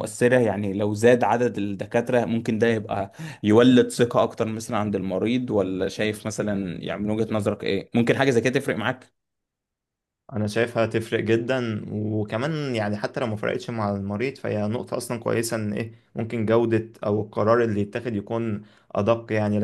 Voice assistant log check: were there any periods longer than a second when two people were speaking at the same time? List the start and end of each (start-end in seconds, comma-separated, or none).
none